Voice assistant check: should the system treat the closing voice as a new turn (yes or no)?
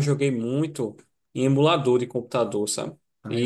no